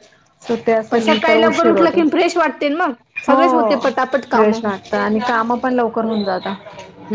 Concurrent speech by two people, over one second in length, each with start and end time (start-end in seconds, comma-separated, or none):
0.9-3.4